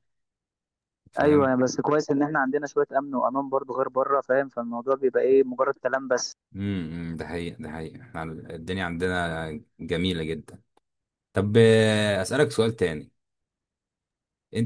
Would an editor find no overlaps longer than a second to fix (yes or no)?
yes